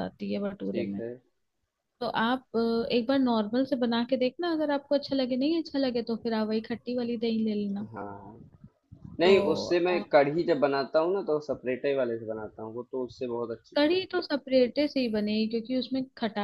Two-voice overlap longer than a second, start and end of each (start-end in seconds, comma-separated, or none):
none